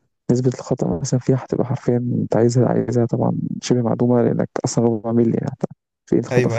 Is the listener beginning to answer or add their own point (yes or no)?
yes